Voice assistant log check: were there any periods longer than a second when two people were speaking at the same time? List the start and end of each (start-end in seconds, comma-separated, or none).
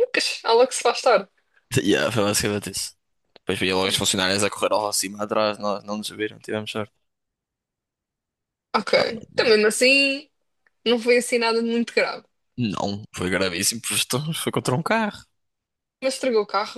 none